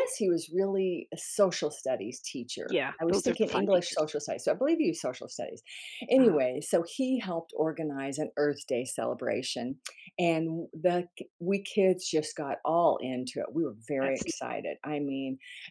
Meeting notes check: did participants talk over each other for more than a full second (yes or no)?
yes